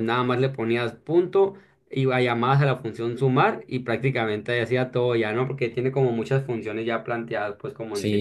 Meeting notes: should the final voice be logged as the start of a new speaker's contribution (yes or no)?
yes